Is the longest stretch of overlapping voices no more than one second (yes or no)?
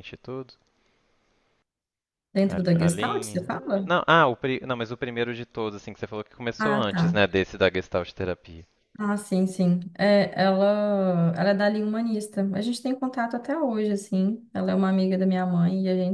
no